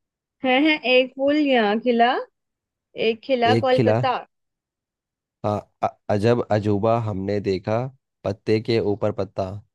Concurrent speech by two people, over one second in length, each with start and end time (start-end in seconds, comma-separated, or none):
none